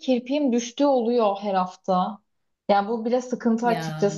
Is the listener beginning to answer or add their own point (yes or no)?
no